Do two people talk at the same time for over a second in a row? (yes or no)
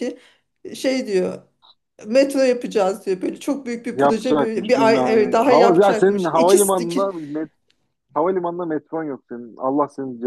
yes